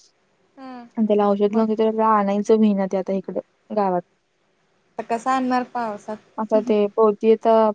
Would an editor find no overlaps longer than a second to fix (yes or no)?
yes